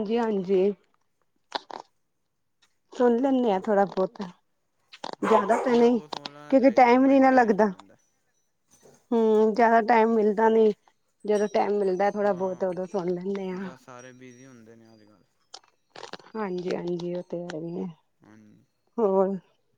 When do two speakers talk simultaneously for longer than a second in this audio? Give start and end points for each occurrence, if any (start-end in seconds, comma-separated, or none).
5.3-7.7